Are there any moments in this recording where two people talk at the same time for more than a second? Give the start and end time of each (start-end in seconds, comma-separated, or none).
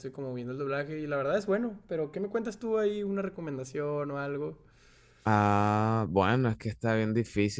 none